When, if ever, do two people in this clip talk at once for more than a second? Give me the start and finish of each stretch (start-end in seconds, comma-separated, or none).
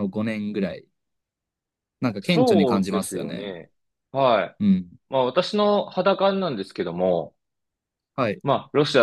2.2-3.5